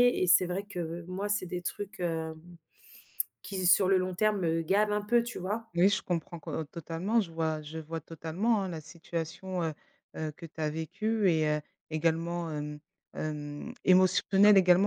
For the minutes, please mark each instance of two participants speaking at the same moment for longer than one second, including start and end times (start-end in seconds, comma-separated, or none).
none